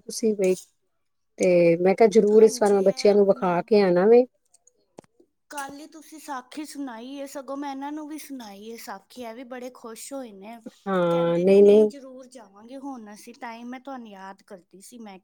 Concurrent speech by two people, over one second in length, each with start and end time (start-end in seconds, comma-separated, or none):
2.4-3.6